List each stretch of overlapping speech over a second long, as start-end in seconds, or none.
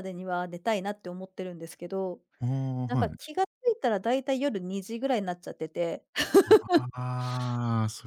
none